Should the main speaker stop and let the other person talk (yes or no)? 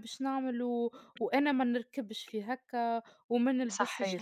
no